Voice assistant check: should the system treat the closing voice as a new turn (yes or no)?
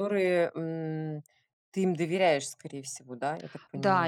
yes